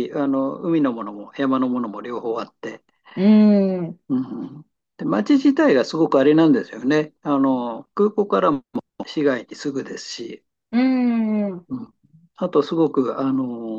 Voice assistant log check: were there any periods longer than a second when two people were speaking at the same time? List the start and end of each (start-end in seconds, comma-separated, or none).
none